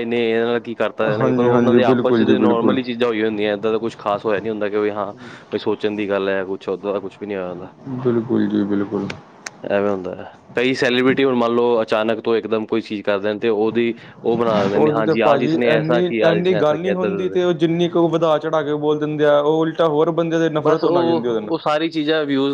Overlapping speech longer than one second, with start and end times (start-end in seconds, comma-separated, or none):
1.2-2.8, 14.8-17.4